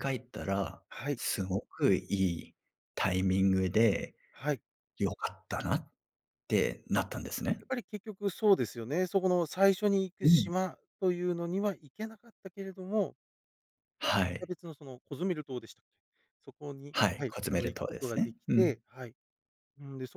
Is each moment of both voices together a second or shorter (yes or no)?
no